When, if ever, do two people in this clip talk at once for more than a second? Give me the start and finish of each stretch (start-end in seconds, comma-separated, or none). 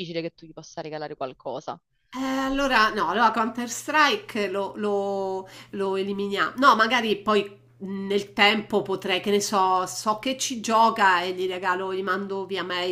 none